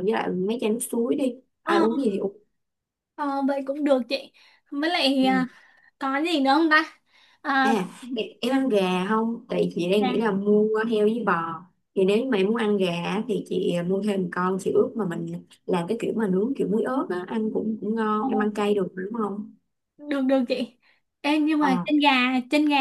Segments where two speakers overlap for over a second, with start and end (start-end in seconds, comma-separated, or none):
none